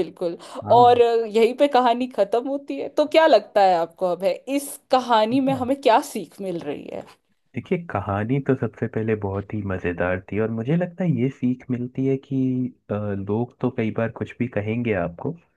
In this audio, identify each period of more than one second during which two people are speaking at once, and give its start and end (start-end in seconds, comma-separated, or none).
none